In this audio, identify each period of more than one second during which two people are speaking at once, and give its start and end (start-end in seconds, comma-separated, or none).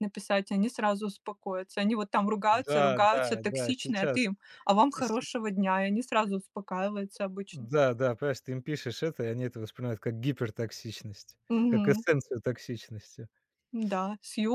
2.5-4.3